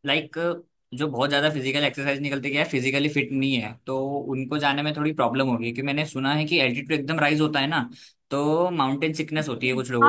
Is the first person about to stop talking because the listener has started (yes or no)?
yes